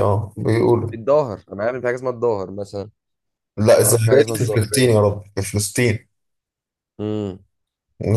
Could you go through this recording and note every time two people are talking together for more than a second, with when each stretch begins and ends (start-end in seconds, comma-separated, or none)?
3.8-5.1